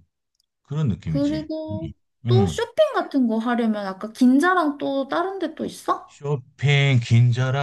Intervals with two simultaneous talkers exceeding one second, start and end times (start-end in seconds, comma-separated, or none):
none